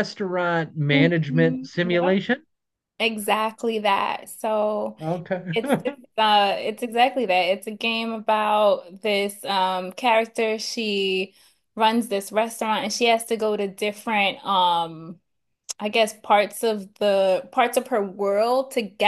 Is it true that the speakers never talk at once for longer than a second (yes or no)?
no